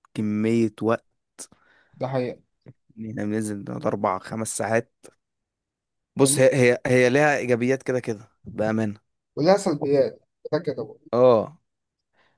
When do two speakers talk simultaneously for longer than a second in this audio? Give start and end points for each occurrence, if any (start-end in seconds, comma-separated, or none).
none